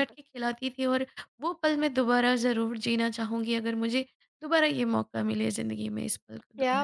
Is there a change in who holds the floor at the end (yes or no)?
yes